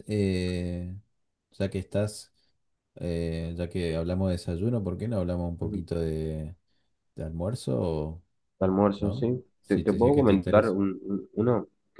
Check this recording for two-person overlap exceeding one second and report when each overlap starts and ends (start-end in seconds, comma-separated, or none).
9.0-10.8